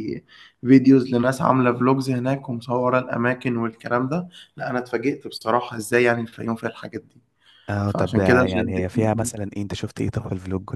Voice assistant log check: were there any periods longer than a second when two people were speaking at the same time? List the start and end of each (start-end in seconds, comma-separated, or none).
7.8-9.3